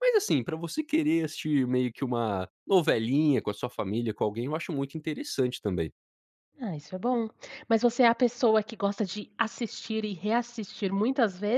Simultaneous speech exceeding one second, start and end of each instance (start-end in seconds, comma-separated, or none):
none